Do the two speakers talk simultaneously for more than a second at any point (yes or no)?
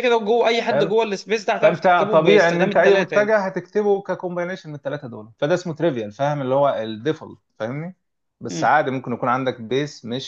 yes